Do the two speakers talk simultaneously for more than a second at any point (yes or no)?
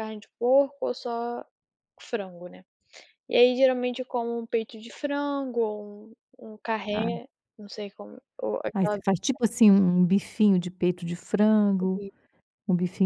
no